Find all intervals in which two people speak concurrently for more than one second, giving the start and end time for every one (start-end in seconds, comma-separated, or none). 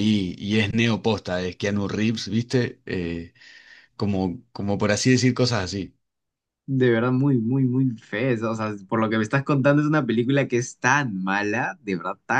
none